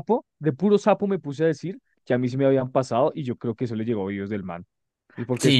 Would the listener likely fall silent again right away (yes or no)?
no